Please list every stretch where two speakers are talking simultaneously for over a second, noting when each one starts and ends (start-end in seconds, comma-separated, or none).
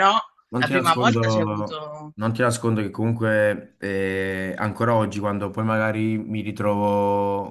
0.6-2.1